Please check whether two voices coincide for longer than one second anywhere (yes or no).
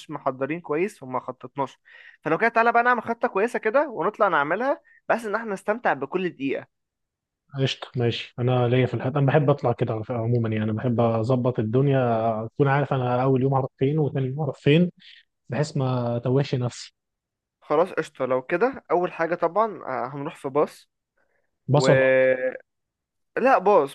no